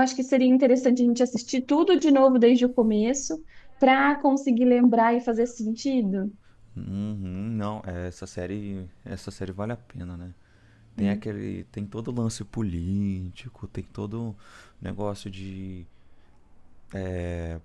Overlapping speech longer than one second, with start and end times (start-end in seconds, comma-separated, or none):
none